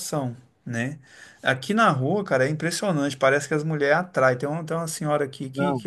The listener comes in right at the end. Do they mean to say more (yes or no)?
no